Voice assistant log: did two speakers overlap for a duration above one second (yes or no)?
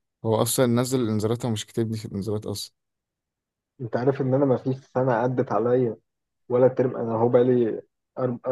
no